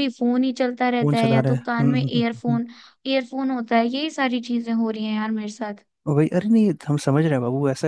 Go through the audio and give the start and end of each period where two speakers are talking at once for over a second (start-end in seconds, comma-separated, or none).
1.0-2.6